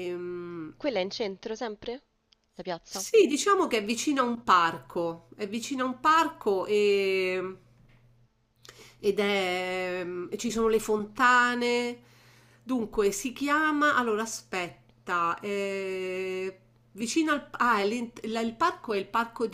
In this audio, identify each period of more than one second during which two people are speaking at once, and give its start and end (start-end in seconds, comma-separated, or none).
none